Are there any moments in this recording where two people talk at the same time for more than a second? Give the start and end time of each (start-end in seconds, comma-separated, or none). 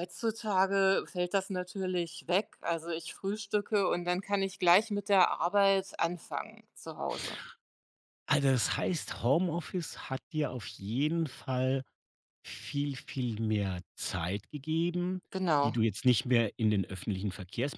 none